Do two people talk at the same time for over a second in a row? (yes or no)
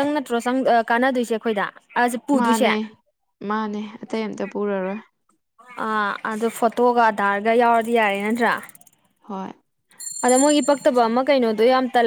no